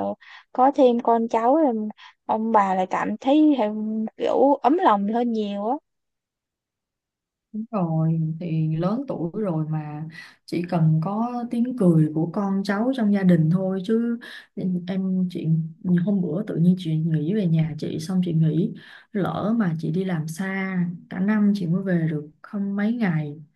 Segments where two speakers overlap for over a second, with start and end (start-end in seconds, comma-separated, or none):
none